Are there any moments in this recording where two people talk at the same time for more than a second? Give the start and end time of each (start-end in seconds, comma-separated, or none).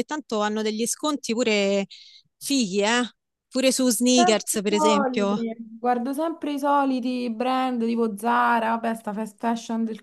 4.1-5.4